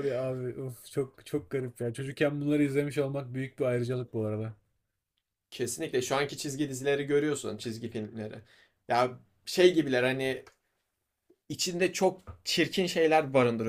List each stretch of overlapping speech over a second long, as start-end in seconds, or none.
none